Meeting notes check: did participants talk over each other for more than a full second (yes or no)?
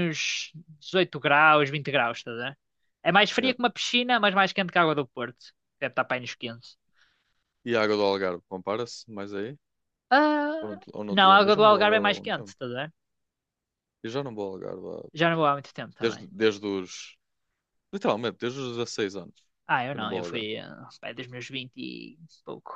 yes